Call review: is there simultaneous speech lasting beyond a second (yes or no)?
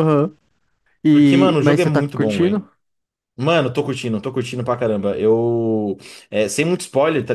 yes